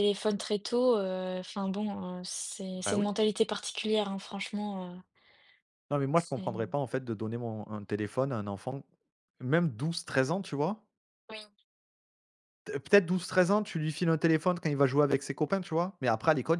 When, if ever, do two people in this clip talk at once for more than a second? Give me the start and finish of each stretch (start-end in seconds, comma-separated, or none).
none